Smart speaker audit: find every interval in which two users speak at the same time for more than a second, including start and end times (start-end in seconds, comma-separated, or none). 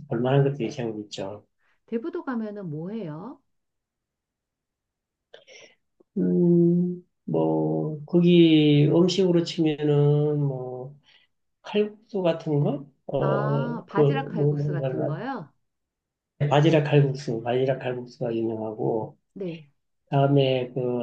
13.2-14.9